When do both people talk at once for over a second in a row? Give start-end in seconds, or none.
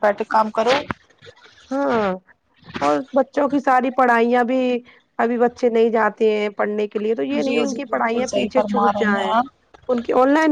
7.5-9.3